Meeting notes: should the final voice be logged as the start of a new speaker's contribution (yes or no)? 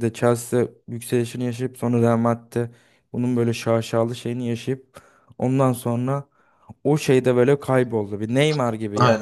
yes